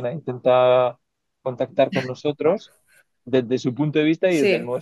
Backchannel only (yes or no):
yes